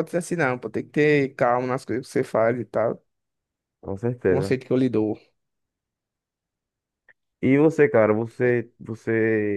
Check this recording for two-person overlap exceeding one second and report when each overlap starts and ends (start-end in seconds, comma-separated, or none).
none